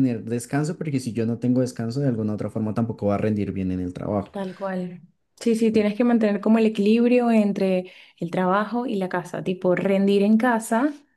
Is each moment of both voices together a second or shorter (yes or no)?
yes